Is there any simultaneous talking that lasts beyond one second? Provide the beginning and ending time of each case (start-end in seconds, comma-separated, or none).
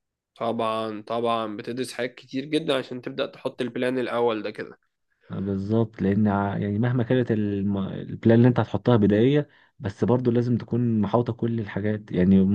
none